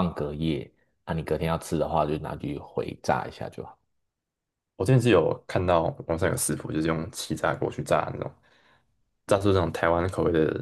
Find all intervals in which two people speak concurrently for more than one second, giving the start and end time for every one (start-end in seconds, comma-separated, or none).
none